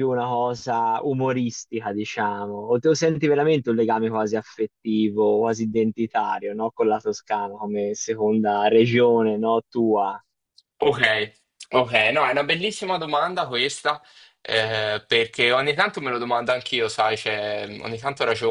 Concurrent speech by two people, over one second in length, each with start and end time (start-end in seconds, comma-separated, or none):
none